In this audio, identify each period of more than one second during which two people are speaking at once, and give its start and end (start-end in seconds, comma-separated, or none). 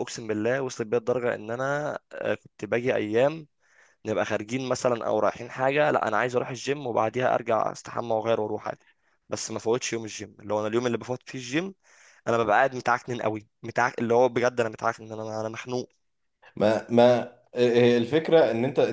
none